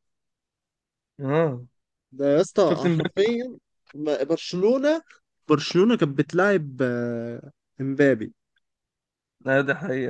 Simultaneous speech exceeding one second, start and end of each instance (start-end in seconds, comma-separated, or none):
none